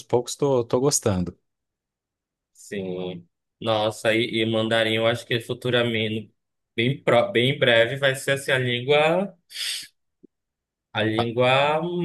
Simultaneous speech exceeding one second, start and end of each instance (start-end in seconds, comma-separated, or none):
none